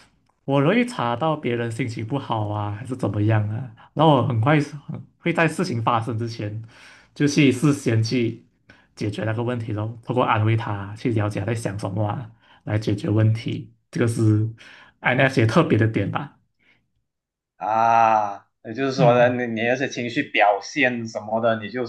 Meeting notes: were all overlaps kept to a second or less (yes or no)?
yes